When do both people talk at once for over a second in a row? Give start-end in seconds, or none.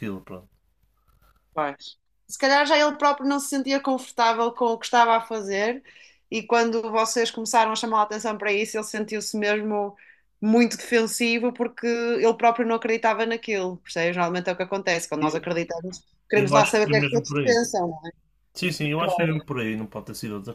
16.3-17.6